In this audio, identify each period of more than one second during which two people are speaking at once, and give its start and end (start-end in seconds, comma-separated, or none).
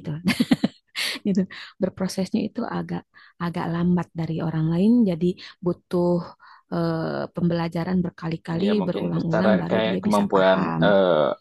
8.6-10.8